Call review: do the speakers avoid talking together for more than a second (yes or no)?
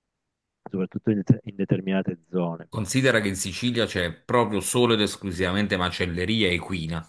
yes